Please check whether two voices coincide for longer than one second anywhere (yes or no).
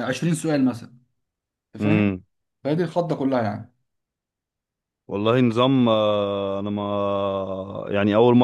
no